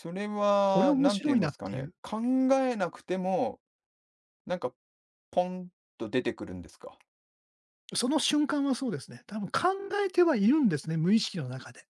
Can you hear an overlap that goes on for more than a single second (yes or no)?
yes